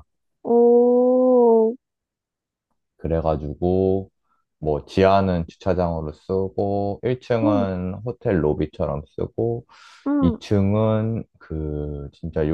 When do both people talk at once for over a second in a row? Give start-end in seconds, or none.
none